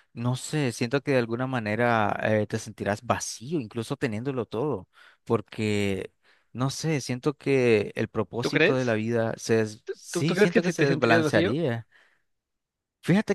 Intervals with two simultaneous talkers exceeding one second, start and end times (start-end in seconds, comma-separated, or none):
10.1-11.6